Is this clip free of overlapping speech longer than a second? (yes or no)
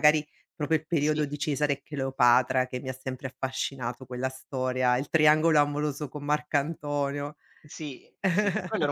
yes